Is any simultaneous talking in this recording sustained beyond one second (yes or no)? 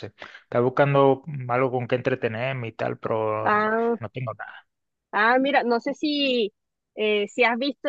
no